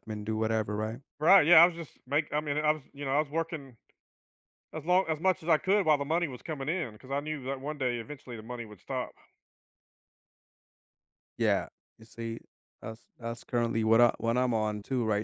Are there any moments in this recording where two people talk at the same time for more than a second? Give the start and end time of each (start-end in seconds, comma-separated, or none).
none